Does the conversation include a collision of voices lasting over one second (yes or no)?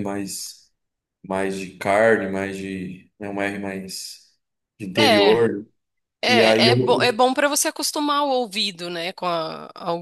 no